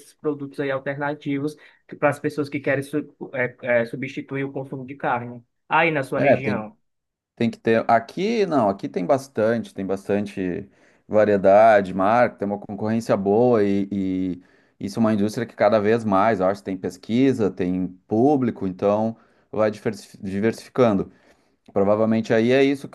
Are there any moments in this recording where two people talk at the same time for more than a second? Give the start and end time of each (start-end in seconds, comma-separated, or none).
none